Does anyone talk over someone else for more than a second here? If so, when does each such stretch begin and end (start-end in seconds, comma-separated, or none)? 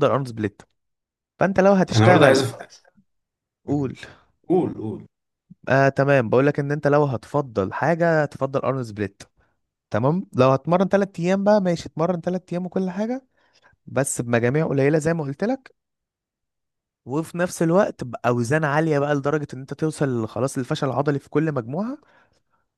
none